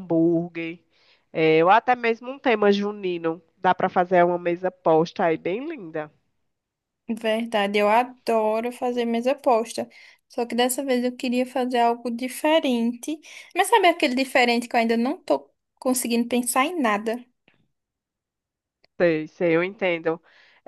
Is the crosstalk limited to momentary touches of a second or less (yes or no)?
yes